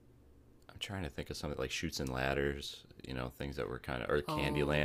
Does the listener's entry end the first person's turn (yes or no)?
yes